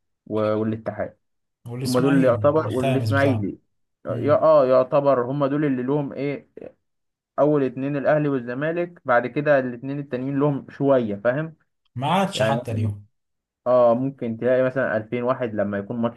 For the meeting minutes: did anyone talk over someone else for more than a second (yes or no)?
yes